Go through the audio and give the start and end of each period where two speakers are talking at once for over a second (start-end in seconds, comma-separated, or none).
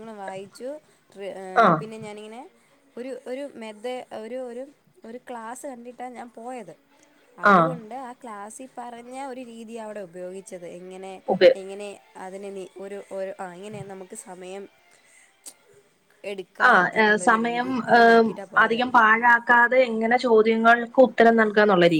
16.7-18.8